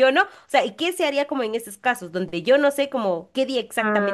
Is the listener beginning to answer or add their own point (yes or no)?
yes